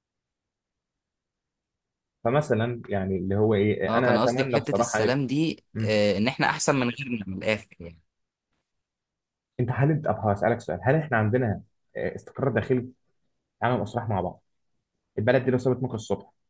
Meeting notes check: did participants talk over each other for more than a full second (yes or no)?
yes